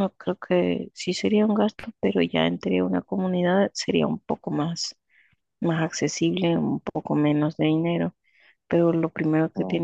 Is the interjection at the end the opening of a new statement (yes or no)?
no